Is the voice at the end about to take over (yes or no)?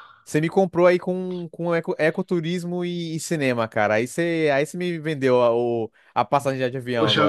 yes